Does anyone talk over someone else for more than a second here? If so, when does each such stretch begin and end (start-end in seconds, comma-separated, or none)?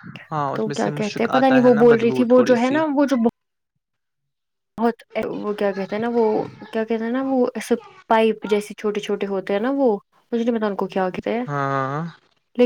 0.5-2.8